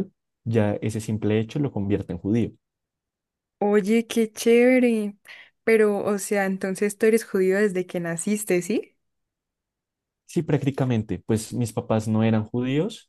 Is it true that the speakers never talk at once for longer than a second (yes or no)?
yes